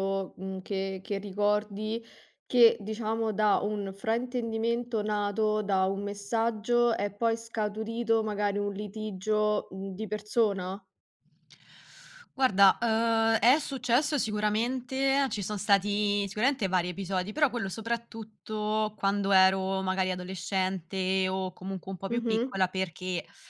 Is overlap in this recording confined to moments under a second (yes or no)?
yes